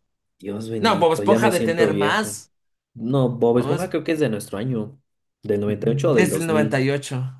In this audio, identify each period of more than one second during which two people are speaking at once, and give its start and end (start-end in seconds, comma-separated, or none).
0.8-2.4, 5.7-6.8